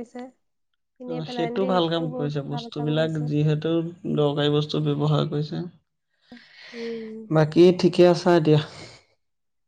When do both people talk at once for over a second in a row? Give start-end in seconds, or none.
1.2-3.2